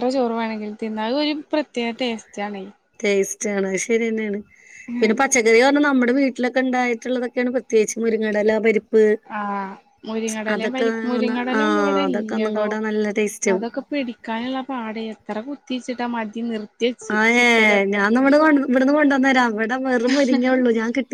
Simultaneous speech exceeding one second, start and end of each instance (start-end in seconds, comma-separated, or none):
none